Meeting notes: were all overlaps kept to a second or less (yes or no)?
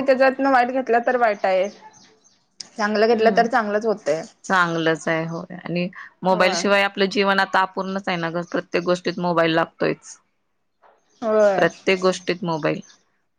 yes